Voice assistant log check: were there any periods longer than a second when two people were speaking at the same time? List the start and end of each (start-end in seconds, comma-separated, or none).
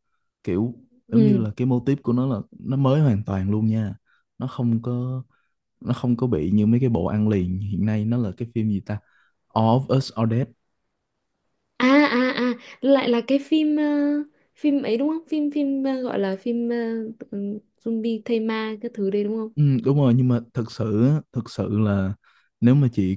none